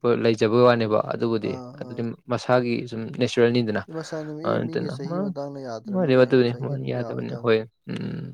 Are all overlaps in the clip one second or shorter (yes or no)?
no